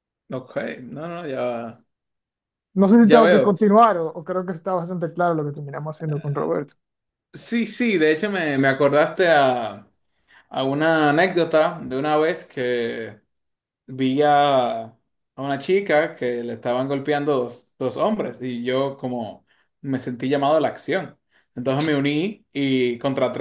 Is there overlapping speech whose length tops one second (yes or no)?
no